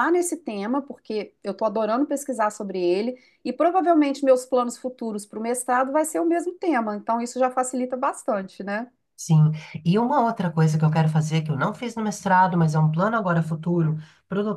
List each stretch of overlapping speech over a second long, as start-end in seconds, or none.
none